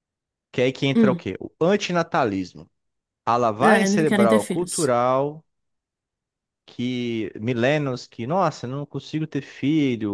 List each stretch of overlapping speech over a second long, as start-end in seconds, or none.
3.6-4.9